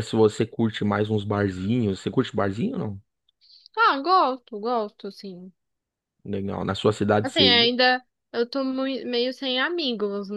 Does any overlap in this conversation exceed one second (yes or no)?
no